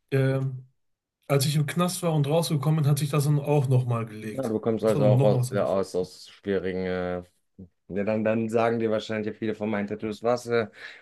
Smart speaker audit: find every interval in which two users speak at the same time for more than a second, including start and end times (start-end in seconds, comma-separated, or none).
4.3-5.8